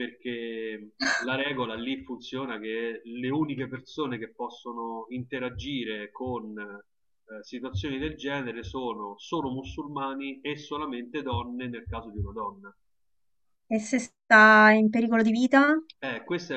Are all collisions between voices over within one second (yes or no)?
yes